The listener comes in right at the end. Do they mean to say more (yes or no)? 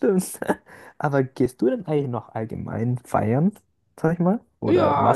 yes